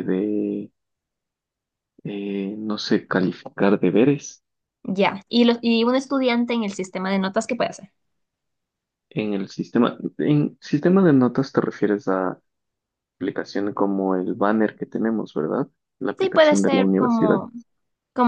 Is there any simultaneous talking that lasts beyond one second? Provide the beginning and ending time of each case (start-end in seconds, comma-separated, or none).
16.2-17.4